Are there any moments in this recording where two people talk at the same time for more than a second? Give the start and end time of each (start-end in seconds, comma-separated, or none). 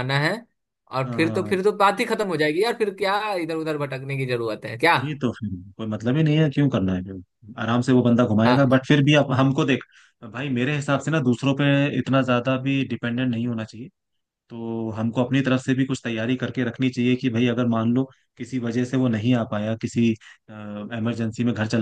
none